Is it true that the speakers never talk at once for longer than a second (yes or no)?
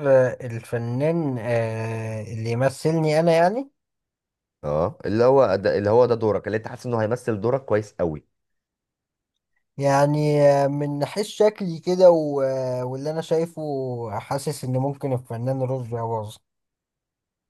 yes